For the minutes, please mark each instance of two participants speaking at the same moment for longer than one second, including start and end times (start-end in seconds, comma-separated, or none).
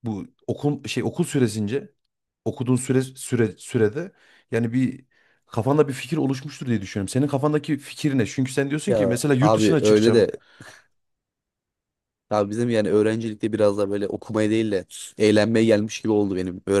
8.9-10.3